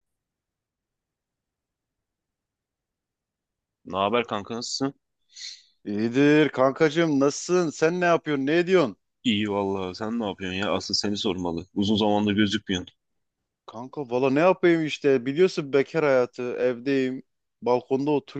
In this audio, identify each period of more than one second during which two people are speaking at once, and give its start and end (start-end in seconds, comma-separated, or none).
none